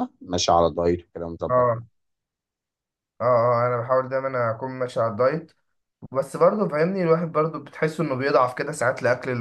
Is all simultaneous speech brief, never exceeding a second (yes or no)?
yes